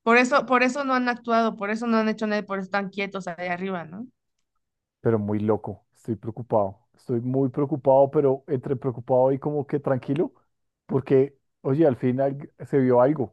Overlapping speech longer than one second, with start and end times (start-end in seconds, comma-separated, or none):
none